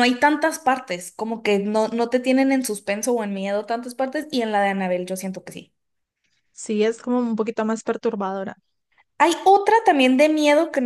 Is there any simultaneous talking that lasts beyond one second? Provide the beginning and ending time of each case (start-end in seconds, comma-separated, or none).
none